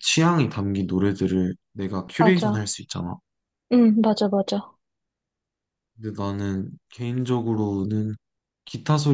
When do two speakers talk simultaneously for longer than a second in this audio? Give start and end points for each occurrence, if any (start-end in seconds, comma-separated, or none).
none